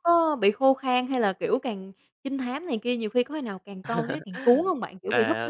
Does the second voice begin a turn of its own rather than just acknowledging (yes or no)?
yes